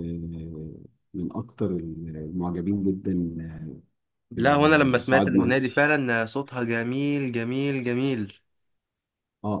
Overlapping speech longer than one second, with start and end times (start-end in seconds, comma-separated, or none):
4.4-5.9